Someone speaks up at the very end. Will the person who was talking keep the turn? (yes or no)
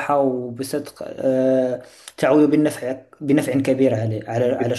no